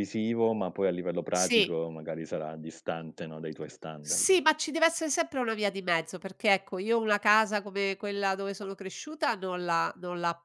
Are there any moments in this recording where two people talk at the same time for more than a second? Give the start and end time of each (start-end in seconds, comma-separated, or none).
none